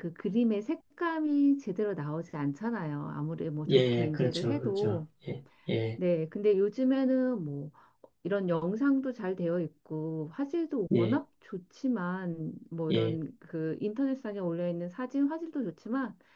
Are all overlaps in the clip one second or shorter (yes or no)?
no